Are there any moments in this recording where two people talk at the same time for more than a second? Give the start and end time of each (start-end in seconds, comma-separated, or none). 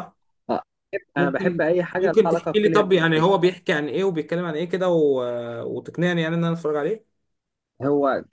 1.2-3.2